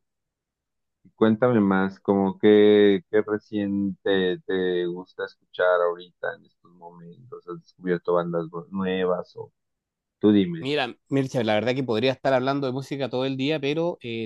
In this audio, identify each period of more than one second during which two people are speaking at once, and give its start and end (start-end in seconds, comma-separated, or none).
none